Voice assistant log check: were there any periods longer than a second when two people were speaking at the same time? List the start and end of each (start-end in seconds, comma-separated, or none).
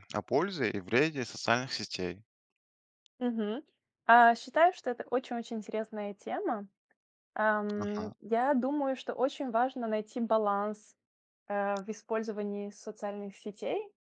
none